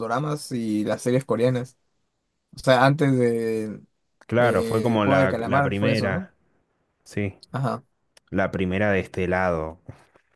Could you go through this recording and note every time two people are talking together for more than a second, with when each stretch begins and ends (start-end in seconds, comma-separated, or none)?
4.4-6.3